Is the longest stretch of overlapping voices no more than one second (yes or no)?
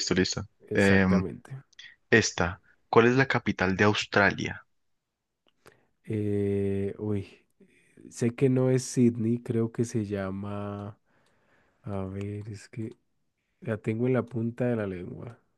yes